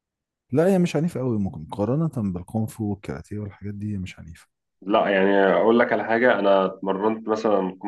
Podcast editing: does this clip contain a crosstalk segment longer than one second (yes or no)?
no